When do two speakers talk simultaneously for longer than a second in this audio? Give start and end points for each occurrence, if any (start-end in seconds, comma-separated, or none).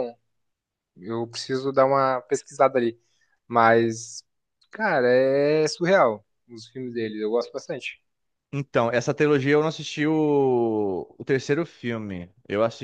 none